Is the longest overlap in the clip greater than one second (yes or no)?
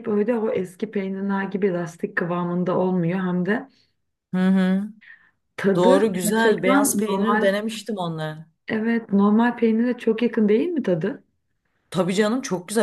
yes